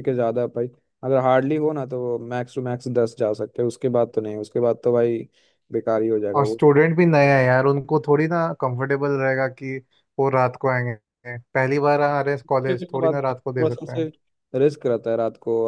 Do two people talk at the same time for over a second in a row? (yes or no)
yes